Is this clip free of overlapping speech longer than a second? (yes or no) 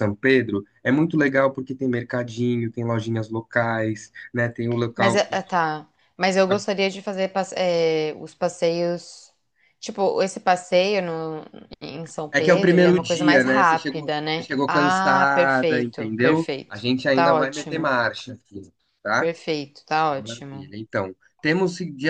no